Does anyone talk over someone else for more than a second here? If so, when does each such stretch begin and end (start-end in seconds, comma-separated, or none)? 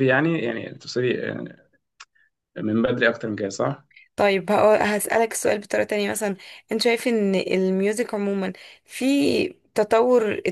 none